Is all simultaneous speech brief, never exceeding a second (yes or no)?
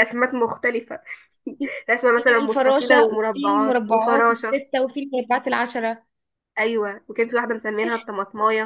no